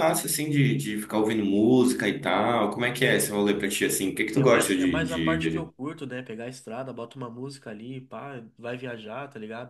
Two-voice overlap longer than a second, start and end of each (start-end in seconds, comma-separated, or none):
4.3-5.7